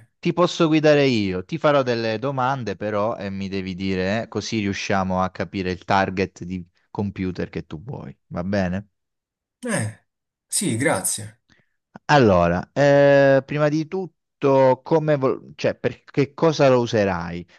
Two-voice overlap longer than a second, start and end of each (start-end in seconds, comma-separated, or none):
none